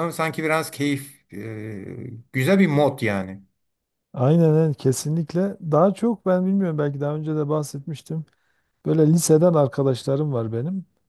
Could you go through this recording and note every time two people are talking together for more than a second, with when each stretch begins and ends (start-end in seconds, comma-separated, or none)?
none